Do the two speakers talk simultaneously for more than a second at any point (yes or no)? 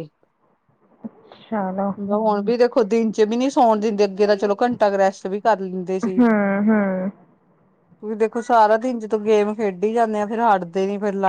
no